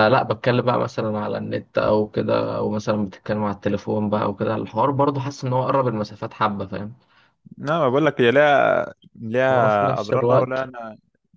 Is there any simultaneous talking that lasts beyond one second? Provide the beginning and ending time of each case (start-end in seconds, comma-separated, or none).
9.5-10.7